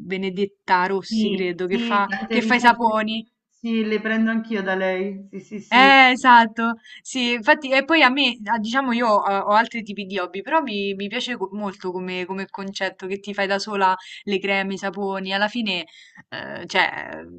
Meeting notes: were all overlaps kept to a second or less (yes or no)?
no